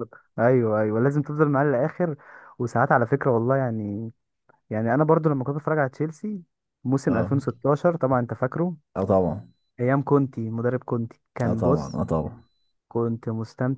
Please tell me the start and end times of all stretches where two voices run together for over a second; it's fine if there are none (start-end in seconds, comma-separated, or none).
none